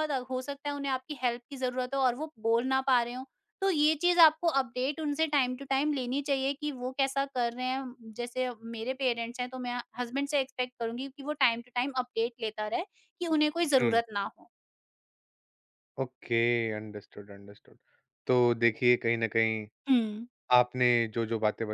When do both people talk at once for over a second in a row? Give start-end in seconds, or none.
none